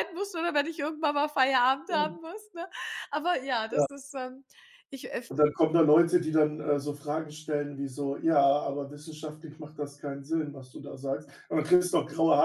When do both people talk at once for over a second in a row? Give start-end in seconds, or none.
none